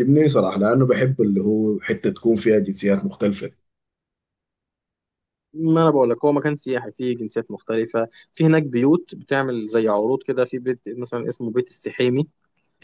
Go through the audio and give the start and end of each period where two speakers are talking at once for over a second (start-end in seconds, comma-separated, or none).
none